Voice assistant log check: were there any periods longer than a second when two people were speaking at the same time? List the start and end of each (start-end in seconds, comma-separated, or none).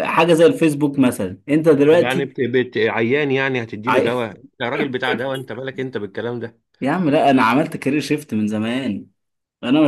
none